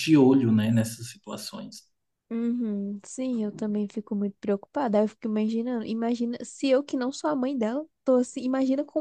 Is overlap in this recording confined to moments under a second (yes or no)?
yes